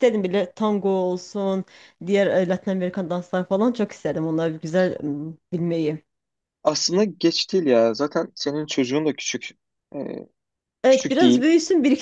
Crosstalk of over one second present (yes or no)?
no